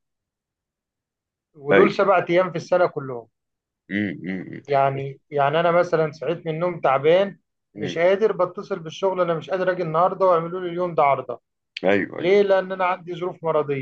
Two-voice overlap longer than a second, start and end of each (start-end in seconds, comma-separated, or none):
none